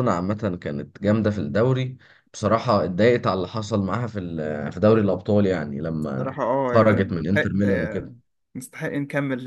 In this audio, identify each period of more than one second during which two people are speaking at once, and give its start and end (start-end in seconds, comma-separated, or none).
6.2-8.1